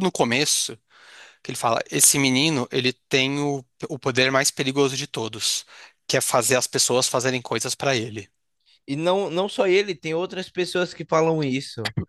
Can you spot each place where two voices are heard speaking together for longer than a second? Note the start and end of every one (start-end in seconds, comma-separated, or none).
none